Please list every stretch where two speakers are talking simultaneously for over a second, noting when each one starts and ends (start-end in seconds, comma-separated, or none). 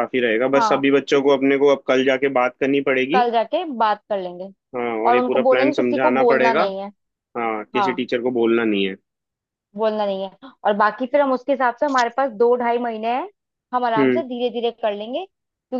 5.1-6.6